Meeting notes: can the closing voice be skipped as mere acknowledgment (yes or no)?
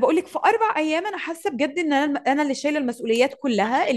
yes